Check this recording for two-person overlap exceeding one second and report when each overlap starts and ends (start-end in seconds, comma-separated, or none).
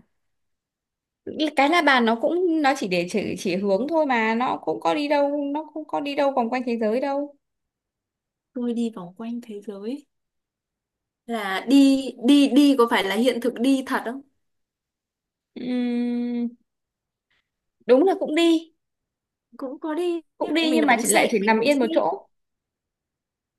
20.4-21.9